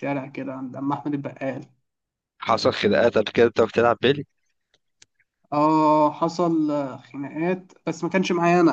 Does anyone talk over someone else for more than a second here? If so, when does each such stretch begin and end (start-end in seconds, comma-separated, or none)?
none